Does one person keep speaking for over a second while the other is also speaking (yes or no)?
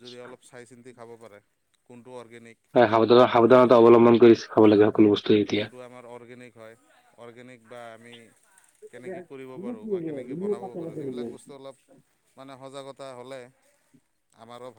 no